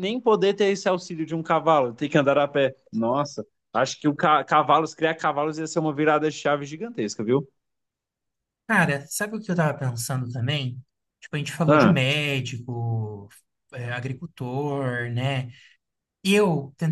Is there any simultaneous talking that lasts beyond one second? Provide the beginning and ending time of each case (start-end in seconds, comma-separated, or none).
none